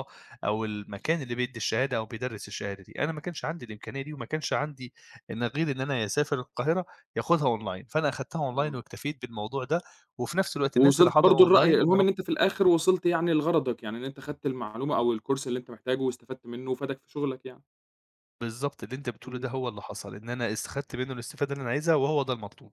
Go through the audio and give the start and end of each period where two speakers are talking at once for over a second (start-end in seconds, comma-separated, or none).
10.8-12.1